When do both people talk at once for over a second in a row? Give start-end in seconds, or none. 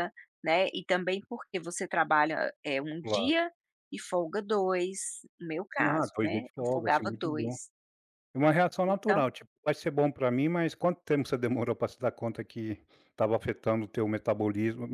5.8-7.5